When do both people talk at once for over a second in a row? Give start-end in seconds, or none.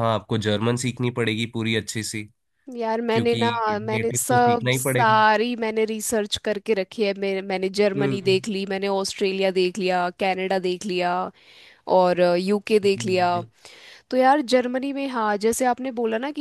3.1-5.2